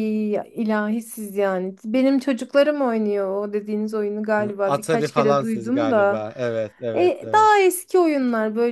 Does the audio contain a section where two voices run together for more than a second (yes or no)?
yes